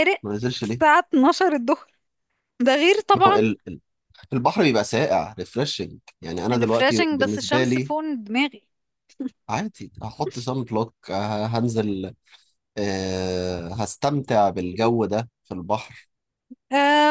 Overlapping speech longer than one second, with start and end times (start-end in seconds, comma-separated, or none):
6.5-7.9